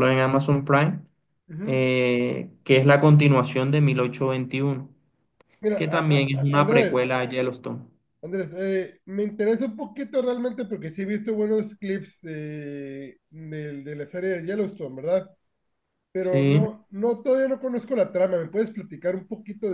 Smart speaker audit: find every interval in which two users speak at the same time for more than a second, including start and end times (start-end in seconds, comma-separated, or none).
5.8-7.0